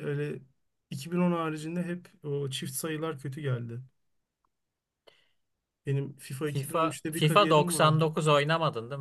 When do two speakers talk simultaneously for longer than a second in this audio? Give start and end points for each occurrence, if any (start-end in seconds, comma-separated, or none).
6.5-8.1